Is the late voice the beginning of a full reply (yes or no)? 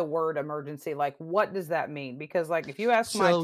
no